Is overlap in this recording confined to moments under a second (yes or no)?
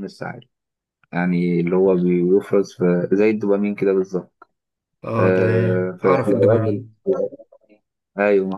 no